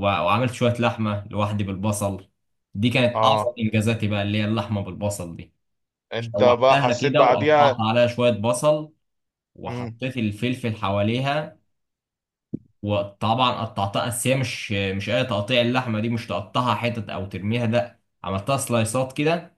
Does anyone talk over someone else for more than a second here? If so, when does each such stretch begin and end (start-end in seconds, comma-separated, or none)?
6.2-7.8